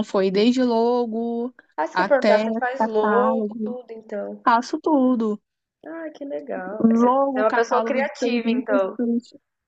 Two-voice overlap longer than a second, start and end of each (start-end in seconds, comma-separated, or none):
1.9-3.8, 6.8-9.0